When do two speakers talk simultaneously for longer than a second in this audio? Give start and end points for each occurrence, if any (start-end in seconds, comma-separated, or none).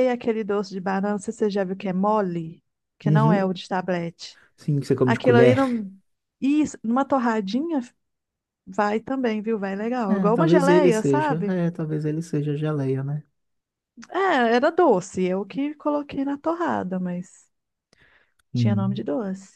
10.1-11.6